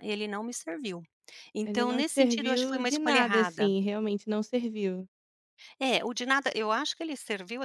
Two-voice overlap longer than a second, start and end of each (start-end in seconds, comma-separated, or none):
1.6-3.7